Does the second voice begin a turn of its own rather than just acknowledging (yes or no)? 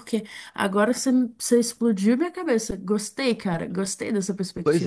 yes